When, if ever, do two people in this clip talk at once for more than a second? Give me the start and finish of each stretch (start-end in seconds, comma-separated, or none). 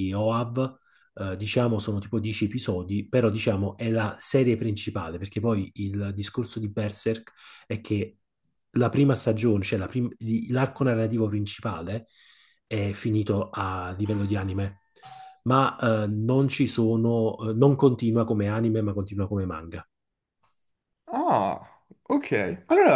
none